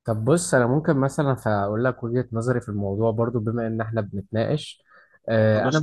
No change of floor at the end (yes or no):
yes